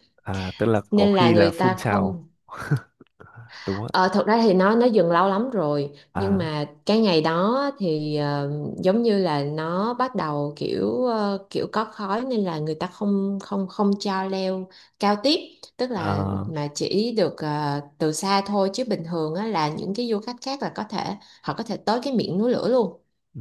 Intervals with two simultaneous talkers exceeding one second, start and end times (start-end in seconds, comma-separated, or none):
0.9-2.2